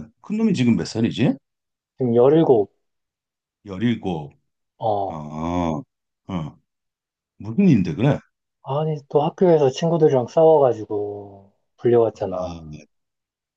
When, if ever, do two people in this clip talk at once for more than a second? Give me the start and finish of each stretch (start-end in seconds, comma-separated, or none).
none